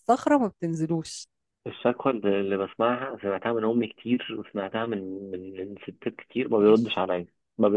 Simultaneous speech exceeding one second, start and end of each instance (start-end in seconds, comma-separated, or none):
none